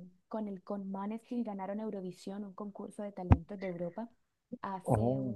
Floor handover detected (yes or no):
no